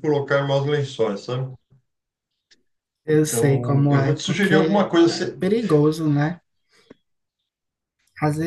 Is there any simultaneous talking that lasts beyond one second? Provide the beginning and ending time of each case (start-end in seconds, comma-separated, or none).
3.1-5.4